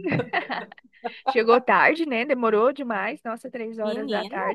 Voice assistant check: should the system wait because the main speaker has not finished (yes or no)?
yes